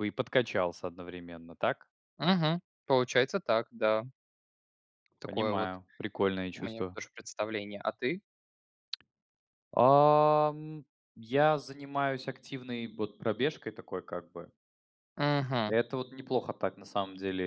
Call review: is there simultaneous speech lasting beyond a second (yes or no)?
no